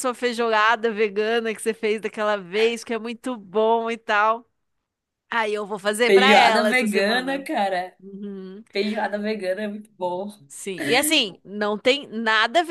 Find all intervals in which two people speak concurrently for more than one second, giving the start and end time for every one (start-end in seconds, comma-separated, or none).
6.0-7.5